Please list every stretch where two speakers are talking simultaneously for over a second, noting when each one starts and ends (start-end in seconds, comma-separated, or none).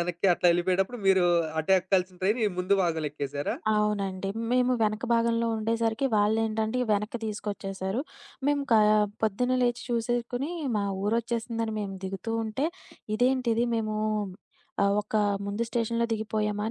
none